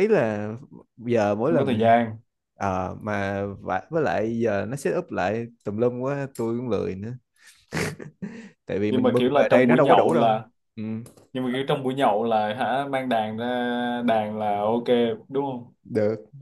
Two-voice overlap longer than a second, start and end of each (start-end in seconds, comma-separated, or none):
8.9-10.4